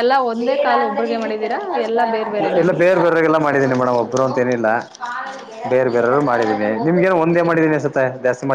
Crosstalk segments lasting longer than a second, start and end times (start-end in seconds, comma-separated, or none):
none